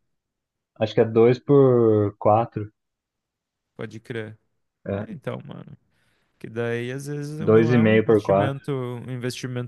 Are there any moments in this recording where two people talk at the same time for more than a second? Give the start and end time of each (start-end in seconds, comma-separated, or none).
7.4-8.6